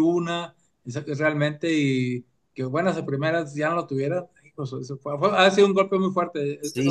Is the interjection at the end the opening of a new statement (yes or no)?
yes